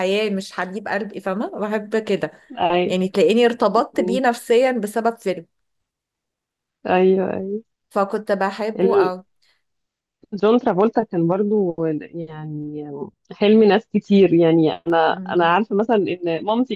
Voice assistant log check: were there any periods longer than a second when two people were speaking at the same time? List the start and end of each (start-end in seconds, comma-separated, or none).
none